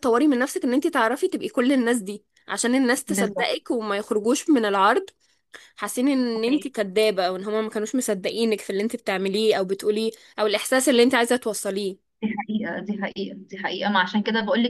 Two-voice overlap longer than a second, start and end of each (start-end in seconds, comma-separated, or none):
none